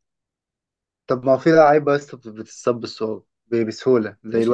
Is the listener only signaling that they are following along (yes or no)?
no